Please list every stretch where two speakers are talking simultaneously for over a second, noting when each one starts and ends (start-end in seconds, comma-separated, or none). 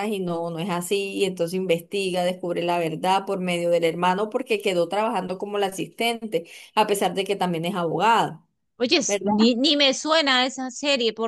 none